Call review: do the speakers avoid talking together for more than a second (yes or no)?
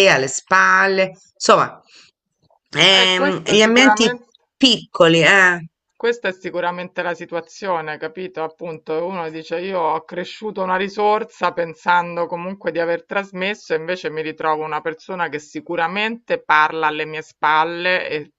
no